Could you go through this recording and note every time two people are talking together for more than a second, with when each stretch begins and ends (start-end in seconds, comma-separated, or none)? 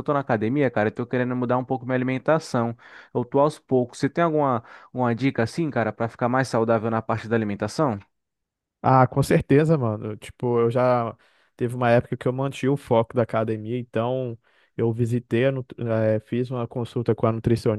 none